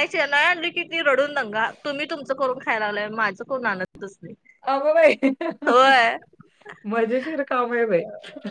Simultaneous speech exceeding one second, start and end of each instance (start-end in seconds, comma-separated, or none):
none